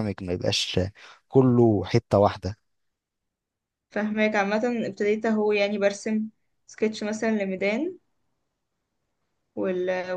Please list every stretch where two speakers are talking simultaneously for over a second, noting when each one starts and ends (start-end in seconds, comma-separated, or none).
none